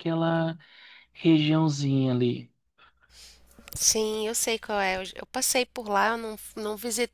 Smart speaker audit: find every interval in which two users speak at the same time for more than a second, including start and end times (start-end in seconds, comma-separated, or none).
none